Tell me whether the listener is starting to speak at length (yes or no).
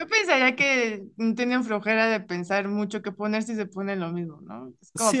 yes